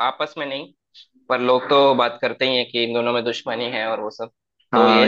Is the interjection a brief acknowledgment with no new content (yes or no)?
no